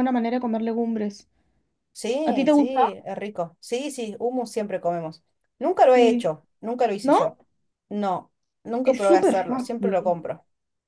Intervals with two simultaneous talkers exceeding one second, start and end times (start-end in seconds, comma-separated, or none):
8.8-10.2